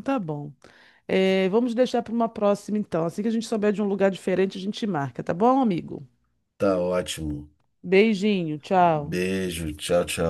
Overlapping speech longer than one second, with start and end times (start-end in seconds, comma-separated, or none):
none